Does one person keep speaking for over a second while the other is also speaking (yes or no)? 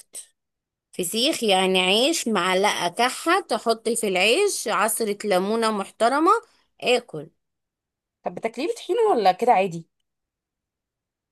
no